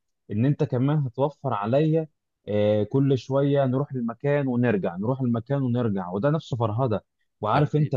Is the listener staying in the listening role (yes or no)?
yes